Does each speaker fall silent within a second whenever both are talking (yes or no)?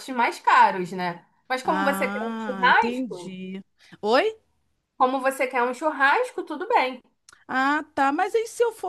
no